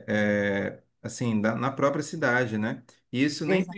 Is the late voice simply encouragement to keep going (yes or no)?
yes